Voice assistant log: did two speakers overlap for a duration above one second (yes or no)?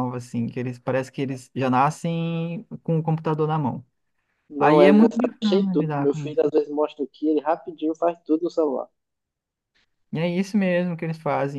yes